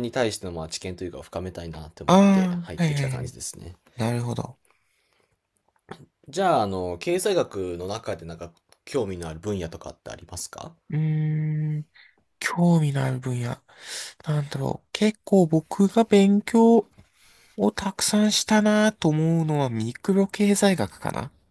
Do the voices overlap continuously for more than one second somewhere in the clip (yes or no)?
no